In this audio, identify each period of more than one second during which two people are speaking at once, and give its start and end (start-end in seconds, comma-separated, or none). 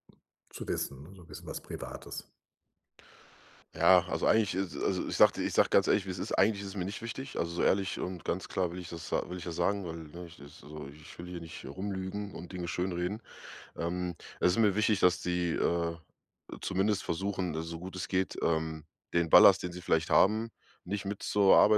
none